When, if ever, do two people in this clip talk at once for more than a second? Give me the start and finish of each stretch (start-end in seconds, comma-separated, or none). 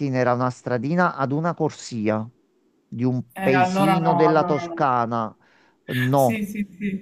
3.3-4.9